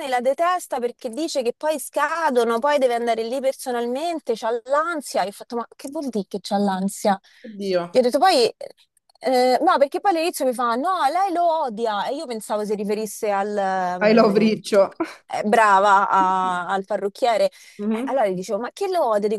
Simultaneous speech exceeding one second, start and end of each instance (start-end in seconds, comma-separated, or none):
none